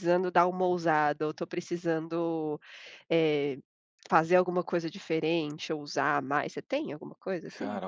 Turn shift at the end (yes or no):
yes